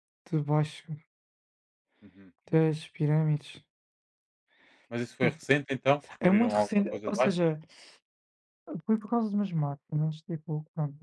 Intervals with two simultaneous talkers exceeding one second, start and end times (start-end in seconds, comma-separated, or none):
6.2-7.4